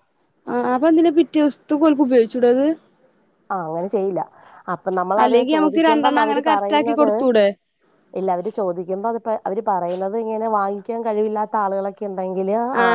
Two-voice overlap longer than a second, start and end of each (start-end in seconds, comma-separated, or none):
5.2-7.1